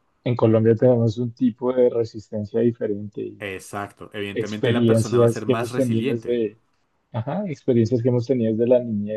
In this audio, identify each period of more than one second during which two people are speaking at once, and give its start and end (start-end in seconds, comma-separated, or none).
4.3-6.4